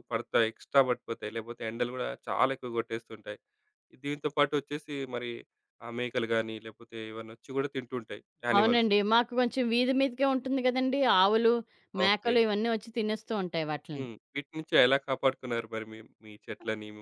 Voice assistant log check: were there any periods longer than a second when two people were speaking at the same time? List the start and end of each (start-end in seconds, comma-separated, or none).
none